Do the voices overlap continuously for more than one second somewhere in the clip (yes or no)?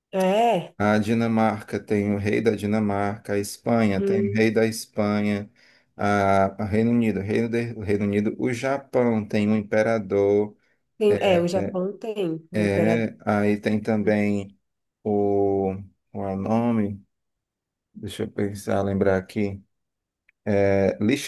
no